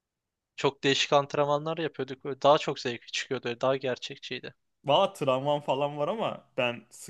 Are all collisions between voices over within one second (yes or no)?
yes